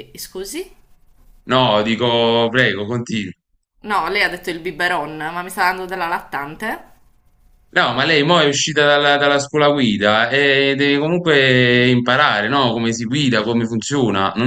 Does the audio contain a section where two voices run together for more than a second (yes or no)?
no